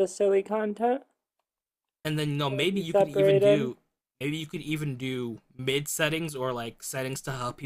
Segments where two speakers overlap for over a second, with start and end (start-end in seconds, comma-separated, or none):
2.5-3.7